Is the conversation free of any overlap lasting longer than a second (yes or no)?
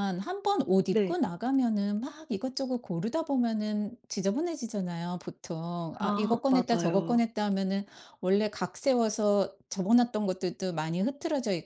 no